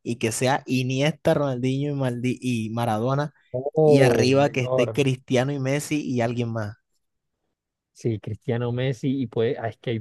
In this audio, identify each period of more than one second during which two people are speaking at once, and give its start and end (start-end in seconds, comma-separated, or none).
3.8-5.0